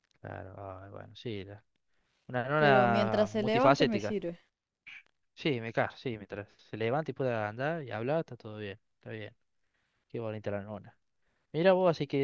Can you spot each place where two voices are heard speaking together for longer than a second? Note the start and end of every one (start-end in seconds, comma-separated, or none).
2.5-4.2